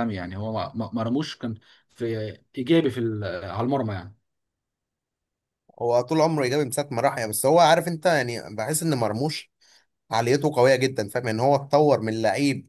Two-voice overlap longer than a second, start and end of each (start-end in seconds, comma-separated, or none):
none